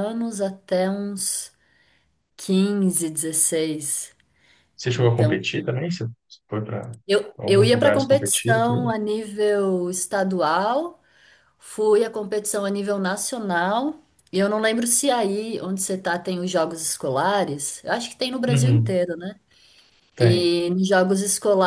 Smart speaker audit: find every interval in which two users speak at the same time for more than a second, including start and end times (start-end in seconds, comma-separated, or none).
7.4-8.9